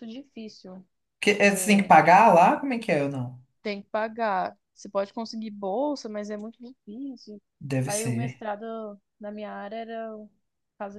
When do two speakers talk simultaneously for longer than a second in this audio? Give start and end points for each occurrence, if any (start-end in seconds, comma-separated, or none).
none